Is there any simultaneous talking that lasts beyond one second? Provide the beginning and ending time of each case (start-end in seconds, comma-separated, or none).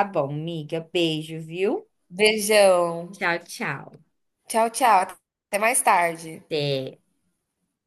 none